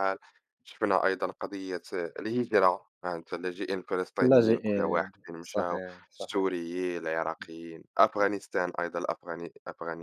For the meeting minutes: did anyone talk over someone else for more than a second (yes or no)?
yes